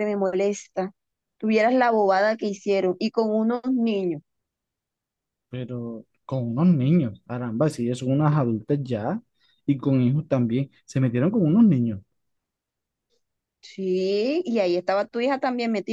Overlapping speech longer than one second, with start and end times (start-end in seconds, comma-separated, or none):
none